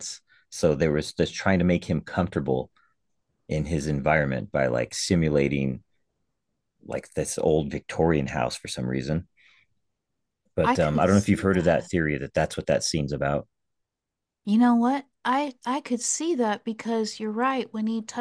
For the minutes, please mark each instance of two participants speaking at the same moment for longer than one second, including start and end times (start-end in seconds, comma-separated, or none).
10.6-11.9